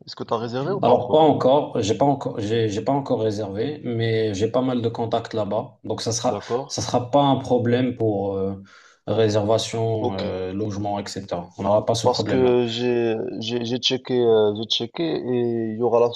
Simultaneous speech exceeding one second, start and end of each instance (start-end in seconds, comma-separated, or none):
none